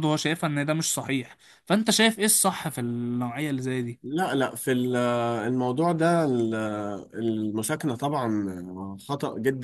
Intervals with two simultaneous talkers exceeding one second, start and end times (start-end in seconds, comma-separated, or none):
none